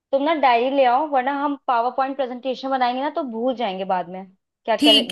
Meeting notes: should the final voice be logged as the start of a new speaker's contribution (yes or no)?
yes